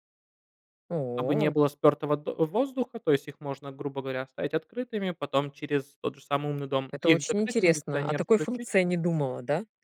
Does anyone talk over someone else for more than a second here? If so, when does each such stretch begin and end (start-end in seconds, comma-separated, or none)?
6.9-8.7